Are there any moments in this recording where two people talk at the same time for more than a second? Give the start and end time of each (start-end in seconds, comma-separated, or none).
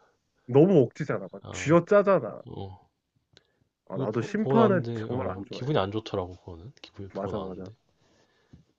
3.9-5.7